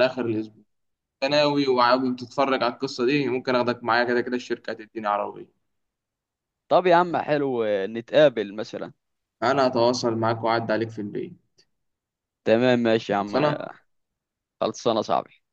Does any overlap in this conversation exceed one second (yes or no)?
no